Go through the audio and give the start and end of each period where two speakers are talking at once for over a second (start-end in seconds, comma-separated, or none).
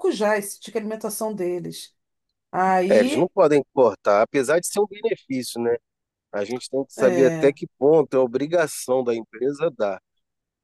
none